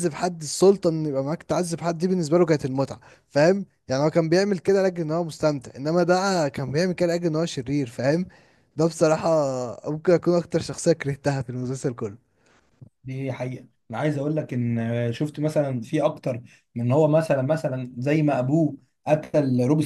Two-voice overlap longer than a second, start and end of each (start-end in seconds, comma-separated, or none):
none